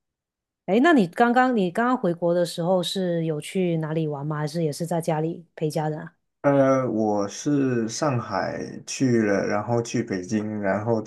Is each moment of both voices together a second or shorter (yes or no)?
yes